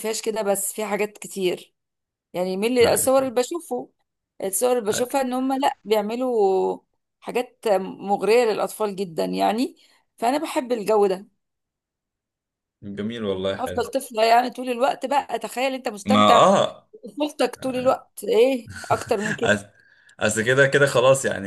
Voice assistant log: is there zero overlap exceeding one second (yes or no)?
yes